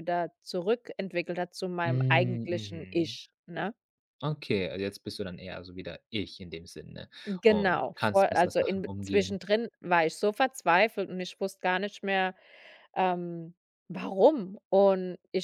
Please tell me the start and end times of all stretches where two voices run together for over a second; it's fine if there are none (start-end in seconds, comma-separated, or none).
1.9-3.2, 7.5-9.4